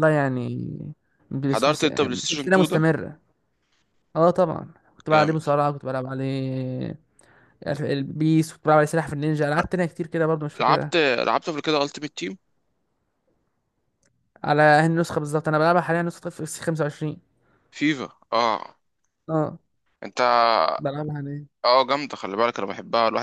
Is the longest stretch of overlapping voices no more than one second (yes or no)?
no